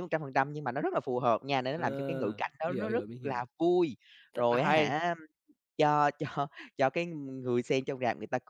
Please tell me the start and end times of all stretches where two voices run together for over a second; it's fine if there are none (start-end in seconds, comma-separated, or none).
1.7-3.4